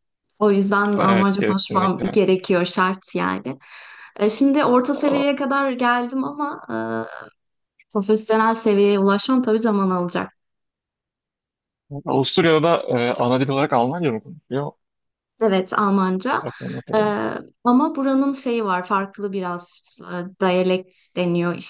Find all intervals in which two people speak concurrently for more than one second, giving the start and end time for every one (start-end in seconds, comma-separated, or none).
1.0-2.2